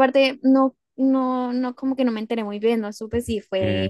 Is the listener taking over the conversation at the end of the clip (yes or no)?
no